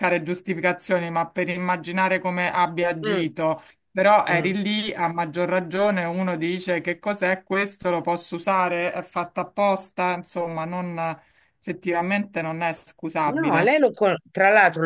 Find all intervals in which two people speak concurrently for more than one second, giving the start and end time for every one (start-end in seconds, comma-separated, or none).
none